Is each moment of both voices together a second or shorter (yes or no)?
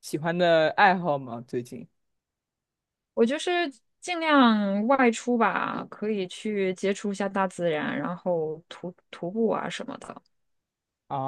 yes